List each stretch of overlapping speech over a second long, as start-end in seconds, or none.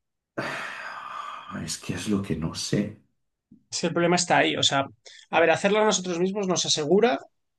none